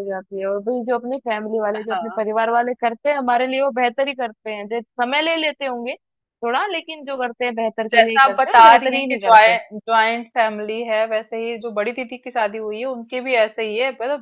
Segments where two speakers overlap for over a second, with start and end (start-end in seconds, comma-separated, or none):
7.9-9.6